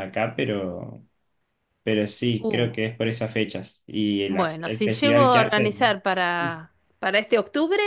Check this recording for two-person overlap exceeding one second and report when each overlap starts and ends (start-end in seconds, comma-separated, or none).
4.3-6.0